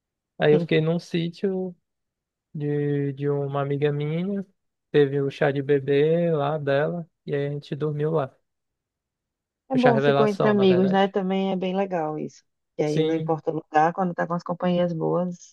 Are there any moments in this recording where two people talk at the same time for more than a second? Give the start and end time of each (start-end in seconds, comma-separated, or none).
9.7-11.1